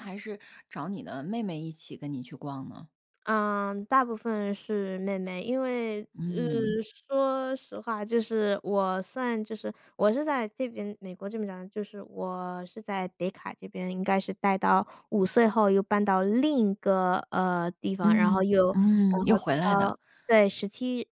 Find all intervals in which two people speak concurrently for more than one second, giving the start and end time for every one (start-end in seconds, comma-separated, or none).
18.0-20.0